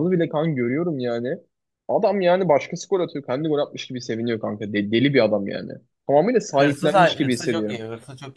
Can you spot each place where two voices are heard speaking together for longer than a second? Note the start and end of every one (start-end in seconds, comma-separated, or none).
6.5-7.8